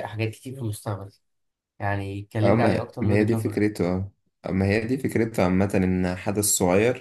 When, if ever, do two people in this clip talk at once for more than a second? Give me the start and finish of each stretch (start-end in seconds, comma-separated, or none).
2.4-3.7